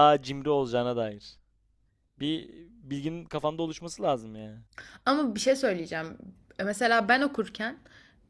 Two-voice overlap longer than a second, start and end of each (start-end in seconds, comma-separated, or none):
none